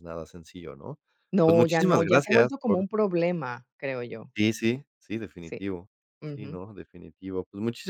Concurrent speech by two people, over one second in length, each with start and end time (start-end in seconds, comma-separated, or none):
1.4-2.9